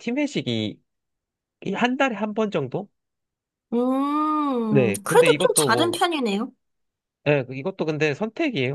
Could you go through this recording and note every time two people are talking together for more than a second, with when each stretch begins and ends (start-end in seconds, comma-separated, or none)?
4.7-6.0